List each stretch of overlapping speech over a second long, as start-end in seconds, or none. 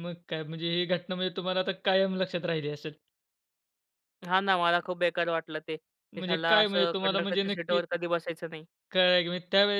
6.1-7.8